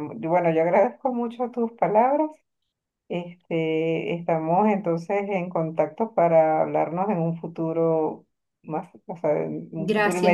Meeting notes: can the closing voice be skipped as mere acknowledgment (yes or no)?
no